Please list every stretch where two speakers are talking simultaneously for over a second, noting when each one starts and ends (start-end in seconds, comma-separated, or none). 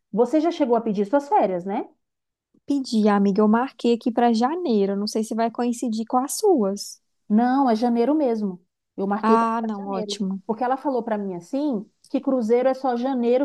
9.2-10.4